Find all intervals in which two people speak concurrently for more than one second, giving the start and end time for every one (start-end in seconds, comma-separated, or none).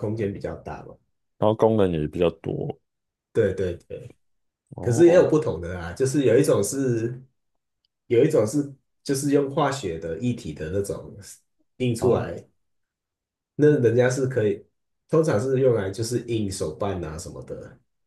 none